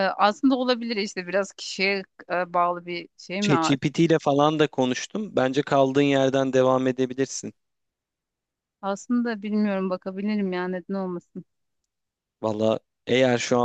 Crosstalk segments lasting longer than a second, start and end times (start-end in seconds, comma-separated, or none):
none